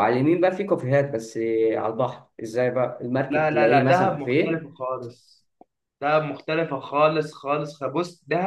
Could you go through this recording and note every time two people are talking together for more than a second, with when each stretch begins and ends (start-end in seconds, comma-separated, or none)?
3.3-4.7